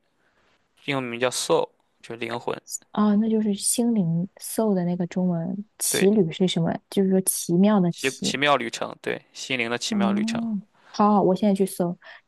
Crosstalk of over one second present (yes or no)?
no